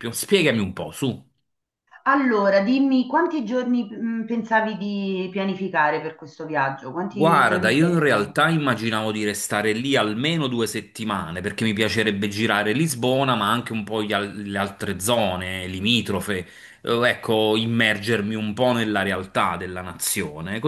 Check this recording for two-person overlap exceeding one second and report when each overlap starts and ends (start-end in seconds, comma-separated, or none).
7.1-8.3